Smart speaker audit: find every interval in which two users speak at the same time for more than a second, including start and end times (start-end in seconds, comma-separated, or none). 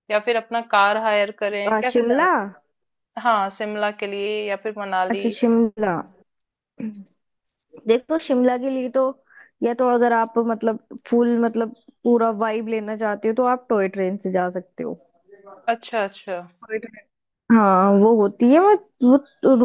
none